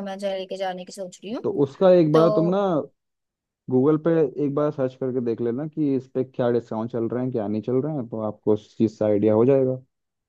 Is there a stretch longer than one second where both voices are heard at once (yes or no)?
no